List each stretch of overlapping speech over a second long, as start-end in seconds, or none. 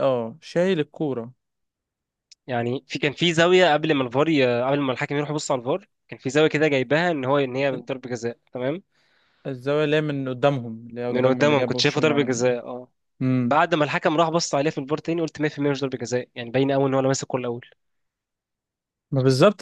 11.1-12.3